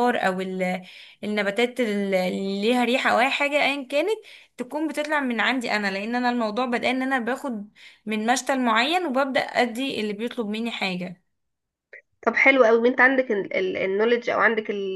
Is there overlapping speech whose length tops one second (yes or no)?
no